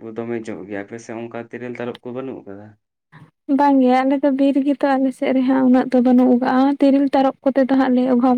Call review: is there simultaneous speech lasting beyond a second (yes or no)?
no